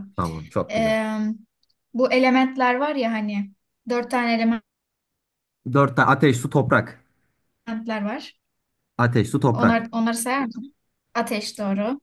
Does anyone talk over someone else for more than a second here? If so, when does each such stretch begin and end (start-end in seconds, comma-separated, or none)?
none